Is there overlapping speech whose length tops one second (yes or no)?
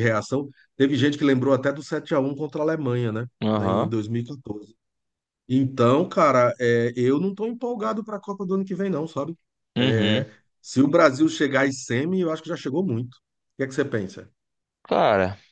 no